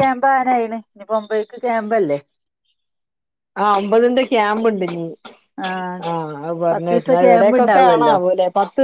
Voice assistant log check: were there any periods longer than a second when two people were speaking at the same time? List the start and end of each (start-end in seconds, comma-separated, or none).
6.7-8.2